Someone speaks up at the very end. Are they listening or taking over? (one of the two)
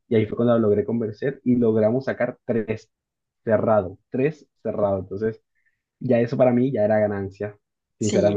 taking over